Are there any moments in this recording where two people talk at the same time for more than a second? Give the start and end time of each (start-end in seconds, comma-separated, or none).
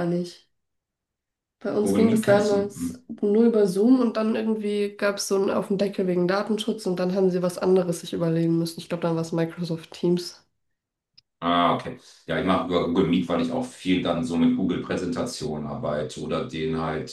1.8-3.0